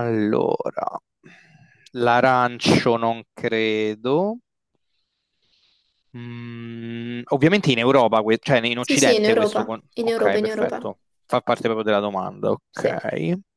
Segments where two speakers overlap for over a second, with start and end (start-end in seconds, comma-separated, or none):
8.8-10.9